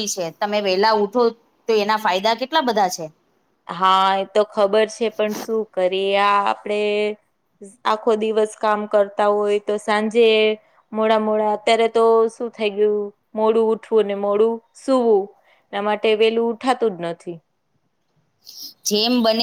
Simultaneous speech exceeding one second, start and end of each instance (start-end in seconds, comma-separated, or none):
none